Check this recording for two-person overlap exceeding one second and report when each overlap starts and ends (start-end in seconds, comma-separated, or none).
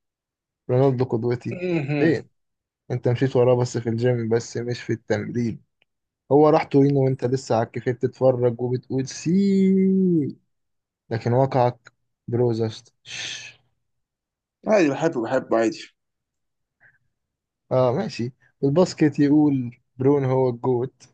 none